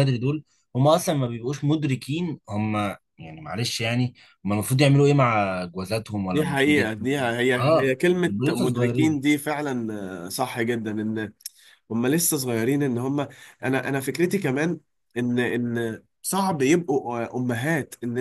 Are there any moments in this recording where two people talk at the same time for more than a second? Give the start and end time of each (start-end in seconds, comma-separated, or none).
6.3-9.2